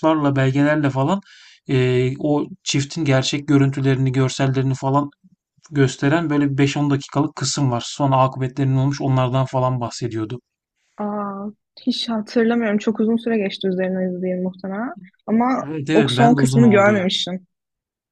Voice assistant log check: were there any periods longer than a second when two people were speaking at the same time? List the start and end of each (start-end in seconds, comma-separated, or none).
15.6-17.1